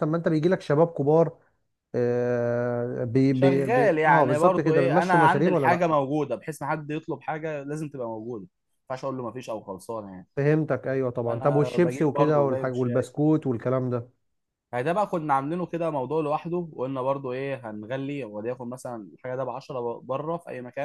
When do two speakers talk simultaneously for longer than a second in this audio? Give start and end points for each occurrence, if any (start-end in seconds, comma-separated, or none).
3.3-5.9, 11.2-12.7